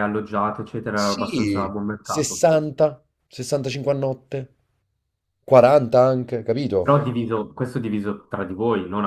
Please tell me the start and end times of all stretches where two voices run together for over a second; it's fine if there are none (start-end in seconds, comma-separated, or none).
0.9-2.5